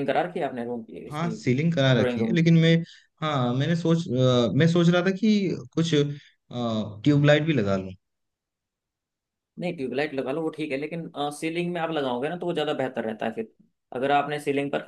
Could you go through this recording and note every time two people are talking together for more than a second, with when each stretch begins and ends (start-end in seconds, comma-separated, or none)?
none